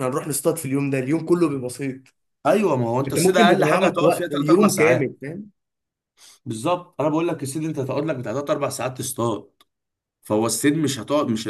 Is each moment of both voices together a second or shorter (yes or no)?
no